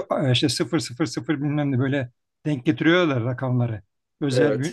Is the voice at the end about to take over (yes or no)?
no